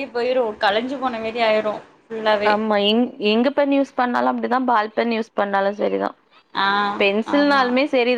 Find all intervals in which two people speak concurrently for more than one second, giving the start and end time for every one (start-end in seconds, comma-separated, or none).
none